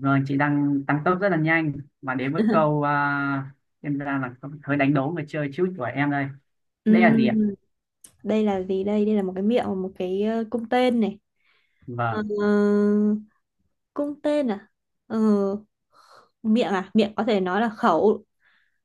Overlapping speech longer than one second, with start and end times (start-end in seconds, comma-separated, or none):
none